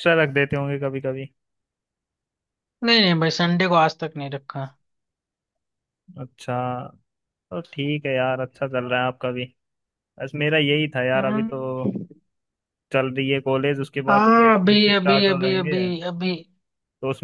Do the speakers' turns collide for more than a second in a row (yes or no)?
yes